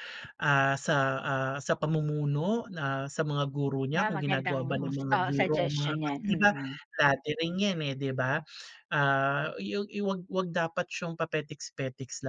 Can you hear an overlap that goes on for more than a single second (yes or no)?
yes